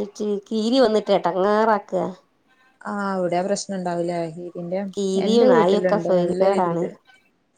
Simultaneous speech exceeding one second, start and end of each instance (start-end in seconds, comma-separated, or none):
5.2-6.8